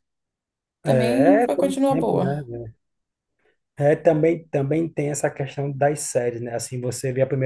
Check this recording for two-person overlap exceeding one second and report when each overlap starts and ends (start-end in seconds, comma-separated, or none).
0.8-2.5